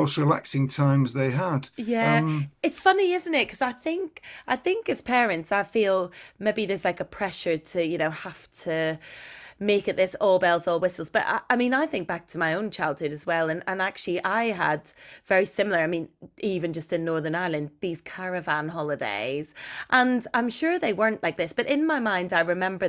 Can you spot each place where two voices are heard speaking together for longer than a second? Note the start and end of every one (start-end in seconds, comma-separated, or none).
none